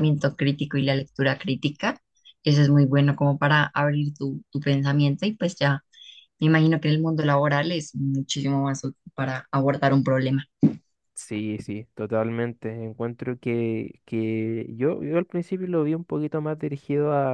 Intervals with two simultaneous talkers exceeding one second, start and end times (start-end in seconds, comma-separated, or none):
none